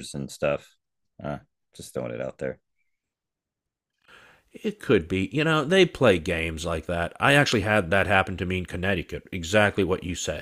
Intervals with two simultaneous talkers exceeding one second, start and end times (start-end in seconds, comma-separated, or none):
none